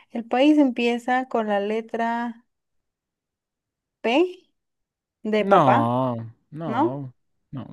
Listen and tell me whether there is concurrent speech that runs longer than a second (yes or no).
no